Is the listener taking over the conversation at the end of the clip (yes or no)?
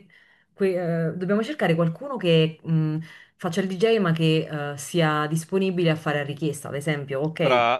yes